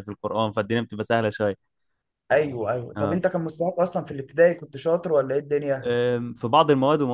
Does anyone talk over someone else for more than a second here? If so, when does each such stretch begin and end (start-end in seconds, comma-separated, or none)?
none